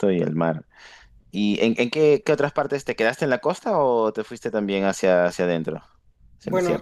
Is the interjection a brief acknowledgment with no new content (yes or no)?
no